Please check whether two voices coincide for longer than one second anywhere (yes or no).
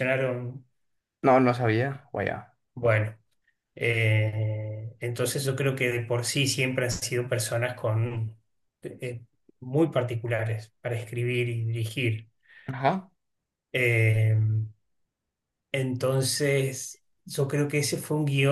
no